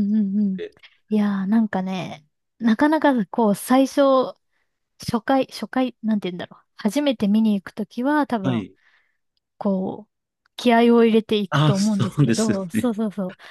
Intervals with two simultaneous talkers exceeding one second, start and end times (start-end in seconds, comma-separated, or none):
11.5-12.9